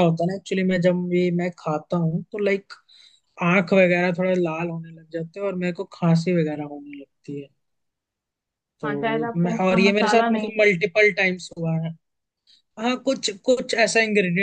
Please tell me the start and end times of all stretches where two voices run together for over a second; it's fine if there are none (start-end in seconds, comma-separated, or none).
8.8-10.5